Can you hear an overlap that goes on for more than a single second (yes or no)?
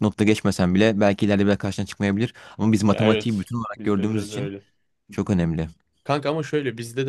yes